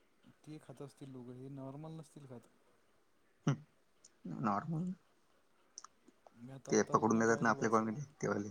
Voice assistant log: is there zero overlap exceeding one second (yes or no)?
no